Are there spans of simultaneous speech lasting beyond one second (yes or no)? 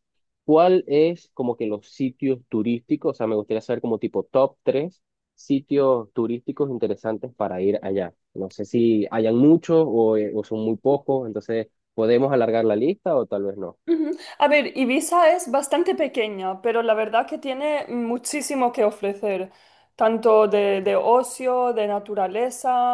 no